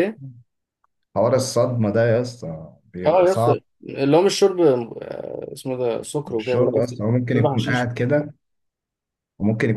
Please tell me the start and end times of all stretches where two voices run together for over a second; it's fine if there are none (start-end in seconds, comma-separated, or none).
6.4-7.9